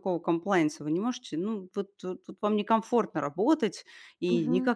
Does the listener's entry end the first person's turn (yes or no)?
no